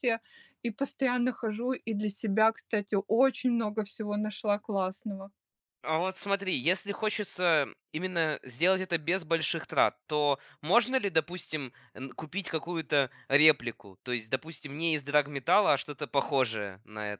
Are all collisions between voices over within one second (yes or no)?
yes